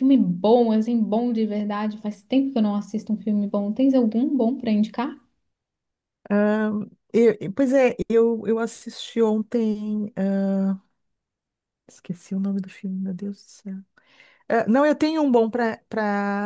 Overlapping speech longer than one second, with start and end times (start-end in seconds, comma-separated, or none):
none